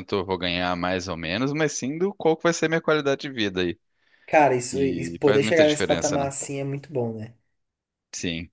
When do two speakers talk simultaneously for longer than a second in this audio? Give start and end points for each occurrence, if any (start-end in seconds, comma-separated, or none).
4.7-6.3